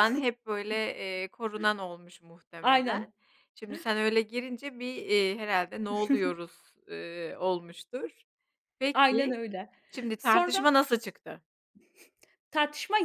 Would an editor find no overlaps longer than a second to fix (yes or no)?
yes